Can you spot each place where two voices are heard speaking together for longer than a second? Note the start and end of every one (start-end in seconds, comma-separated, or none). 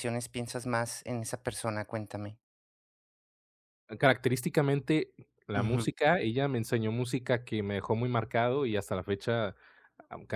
none